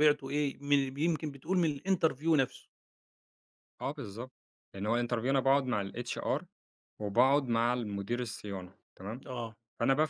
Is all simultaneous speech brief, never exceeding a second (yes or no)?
yes